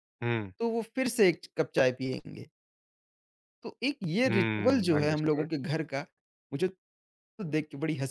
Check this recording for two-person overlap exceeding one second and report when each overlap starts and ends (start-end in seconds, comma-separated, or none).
4.2-5.5